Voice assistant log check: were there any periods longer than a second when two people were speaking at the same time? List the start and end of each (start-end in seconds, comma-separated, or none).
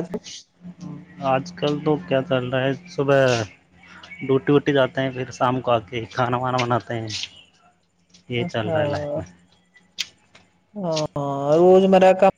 none